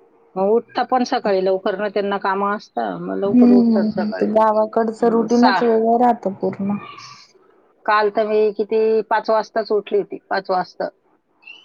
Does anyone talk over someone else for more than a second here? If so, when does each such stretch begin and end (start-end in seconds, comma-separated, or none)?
3.3-5.6